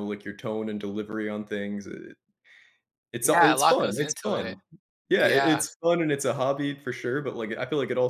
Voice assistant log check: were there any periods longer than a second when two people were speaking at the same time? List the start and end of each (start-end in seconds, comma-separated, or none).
3.2-4.6